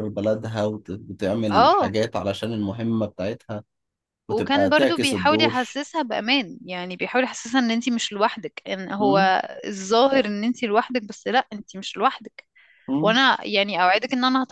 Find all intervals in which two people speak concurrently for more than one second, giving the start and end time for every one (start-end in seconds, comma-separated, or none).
4.3-5.8